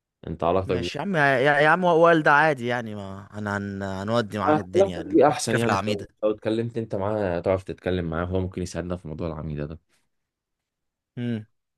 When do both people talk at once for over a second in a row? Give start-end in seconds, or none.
4.5-6.1